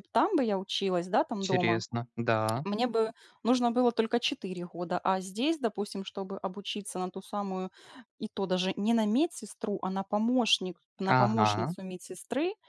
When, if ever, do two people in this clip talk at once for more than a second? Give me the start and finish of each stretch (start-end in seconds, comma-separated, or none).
none